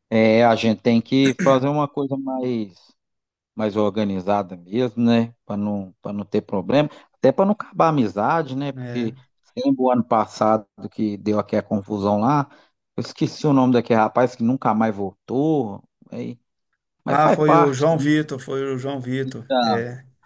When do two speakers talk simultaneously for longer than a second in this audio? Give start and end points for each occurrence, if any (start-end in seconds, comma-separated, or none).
17.1-18.3